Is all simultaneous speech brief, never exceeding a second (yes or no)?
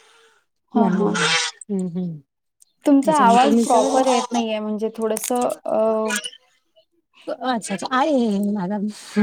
no